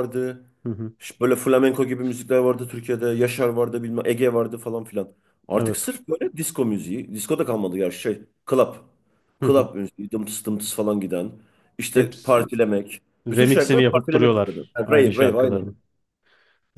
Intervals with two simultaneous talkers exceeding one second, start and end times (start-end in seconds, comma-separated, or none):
13.3-15.7